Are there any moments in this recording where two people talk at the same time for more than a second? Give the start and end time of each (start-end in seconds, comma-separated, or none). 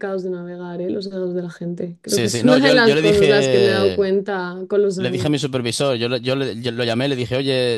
2.1-4.1